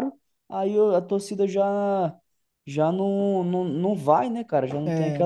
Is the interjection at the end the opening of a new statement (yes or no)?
yes